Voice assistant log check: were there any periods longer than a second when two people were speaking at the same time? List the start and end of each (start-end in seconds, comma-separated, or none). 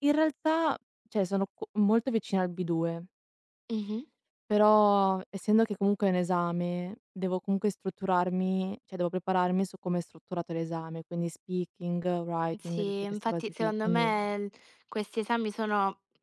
12.6-14.1